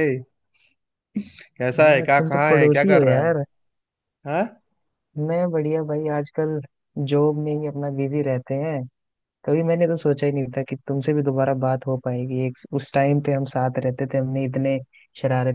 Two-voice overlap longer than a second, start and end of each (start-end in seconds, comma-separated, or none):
1.8-3.3